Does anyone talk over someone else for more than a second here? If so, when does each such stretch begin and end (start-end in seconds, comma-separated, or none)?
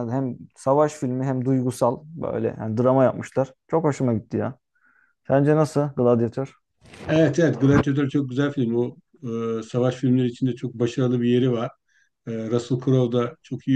none